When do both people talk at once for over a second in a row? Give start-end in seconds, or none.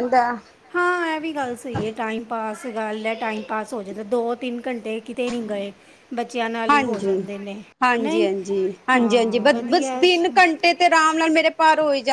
8.9-10.2